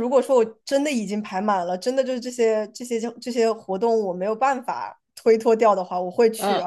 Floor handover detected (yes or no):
no